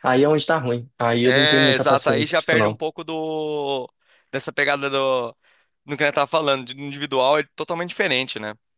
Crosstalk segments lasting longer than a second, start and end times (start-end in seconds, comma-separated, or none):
1.2-2.8